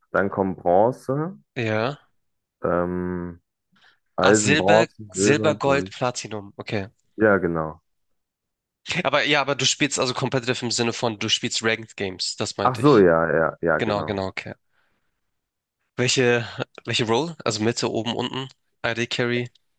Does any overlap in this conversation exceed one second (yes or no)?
yes